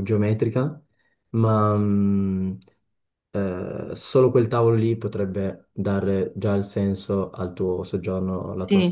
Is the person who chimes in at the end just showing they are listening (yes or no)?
no